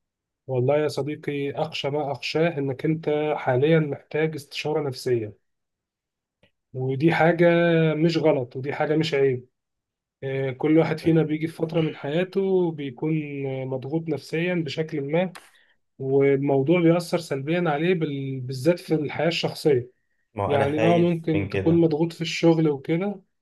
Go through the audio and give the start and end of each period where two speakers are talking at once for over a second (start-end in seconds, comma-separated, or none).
20.5-21.9